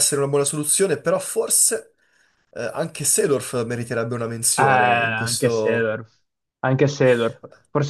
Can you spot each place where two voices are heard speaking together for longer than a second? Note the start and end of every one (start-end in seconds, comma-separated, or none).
4.5-6.0